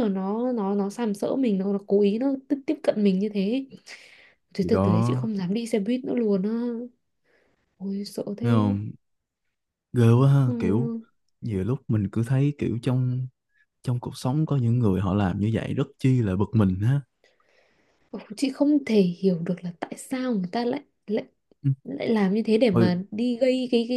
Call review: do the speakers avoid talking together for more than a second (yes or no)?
yes